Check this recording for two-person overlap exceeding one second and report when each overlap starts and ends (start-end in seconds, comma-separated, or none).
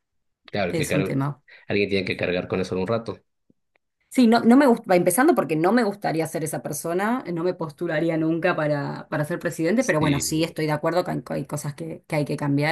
none